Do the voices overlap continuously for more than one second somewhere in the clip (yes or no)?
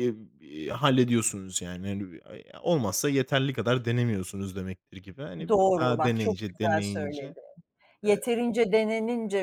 yes